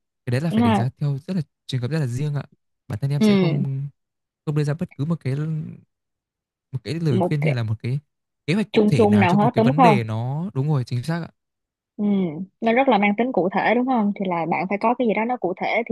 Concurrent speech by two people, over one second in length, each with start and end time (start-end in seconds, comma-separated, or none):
8.7-10.0